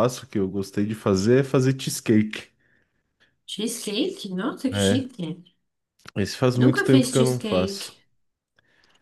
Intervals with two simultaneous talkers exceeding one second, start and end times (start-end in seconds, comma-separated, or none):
6.5-7.9